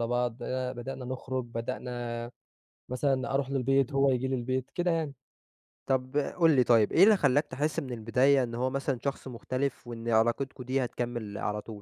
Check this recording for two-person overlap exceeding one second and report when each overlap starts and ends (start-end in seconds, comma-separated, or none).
none